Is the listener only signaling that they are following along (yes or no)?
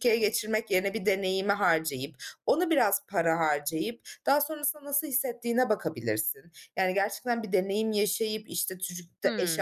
yes